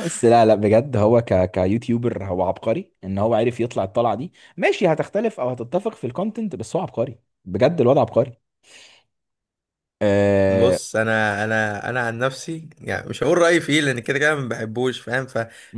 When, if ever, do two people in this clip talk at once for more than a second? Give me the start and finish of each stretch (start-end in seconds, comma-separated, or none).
none